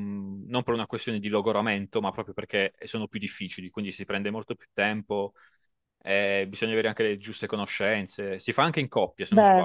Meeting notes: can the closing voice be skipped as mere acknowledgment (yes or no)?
yes